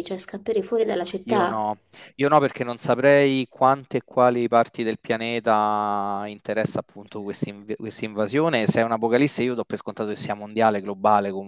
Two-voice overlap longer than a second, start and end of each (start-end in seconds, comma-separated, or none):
none